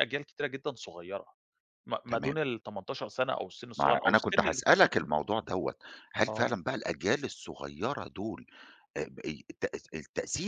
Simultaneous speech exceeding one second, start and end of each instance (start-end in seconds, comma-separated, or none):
3.8-5.1